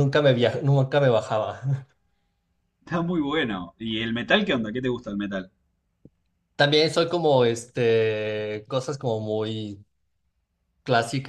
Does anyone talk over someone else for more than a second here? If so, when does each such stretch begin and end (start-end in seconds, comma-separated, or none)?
none